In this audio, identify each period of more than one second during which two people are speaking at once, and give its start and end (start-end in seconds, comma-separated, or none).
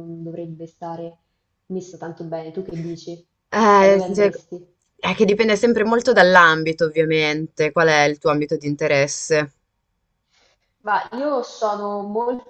none